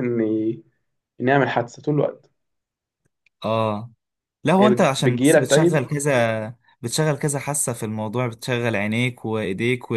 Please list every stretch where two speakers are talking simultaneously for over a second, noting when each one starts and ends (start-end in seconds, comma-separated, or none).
4.6-5.8